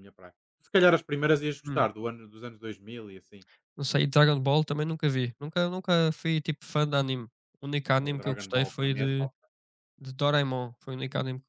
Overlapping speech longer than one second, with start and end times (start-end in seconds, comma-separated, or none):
8.0-9.3